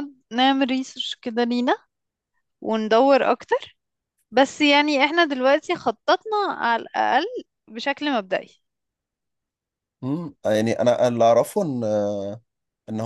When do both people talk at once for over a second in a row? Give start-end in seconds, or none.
none